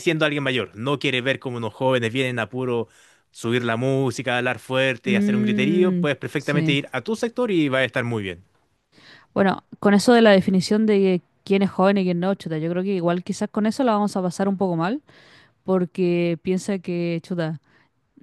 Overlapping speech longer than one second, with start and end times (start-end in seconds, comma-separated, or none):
5.0-6.8